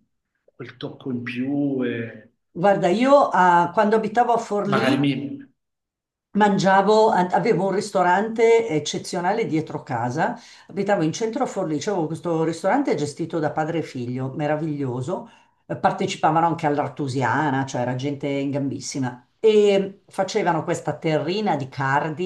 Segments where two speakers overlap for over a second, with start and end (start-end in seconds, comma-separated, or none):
none